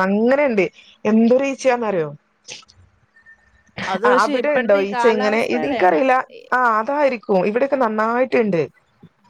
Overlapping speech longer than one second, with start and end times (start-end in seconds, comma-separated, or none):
4.1-6.0